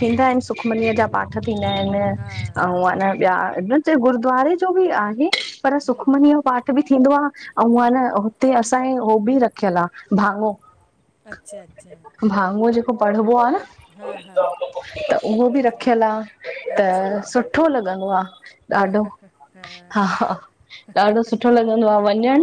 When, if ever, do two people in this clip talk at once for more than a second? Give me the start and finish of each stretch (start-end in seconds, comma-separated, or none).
none